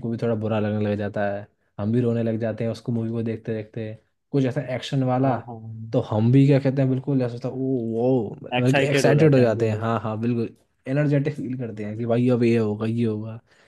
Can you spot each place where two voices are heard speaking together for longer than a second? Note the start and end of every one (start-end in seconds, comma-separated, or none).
8.6-10.0